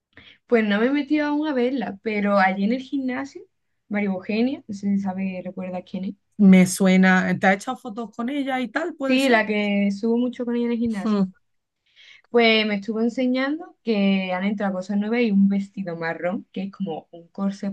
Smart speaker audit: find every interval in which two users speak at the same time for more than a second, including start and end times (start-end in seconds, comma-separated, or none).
none